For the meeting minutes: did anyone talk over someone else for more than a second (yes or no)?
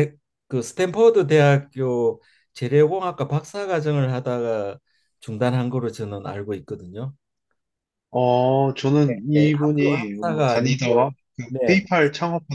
yes